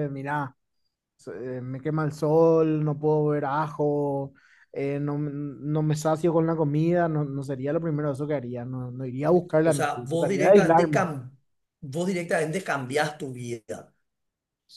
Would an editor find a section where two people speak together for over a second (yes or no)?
yes